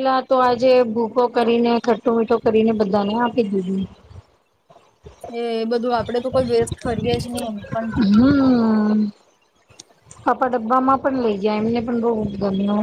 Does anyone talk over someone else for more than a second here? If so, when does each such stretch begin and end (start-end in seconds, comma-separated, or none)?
none